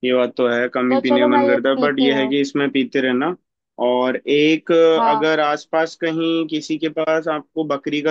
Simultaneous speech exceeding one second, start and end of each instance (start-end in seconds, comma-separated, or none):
0.9-2.4